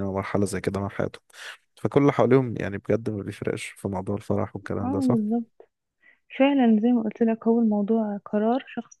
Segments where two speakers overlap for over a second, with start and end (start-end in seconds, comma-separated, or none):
none